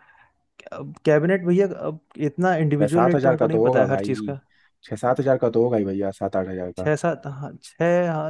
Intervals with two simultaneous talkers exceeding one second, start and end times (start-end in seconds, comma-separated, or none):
2.8-4.3